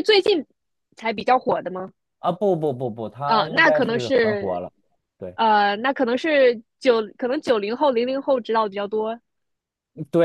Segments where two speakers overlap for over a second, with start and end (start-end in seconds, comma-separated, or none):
3.2-4.6